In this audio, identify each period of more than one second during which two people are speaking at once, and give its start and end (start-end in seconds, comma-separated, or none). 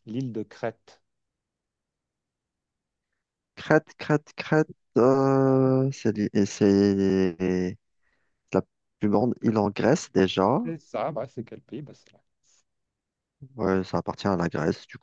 none